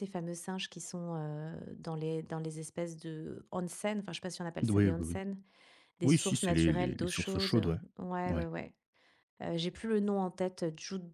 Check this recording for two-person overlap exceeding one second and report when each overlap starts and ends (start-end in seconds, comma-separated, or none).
6.0-7.5